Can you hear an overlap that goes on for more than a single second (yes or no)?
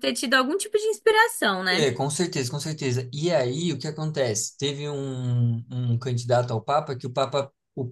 no